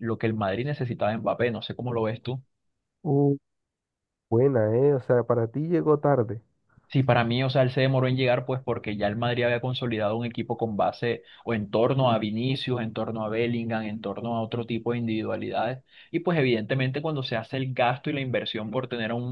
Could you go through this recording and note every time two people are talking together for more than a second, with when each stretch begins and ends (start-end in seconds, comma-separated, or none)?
none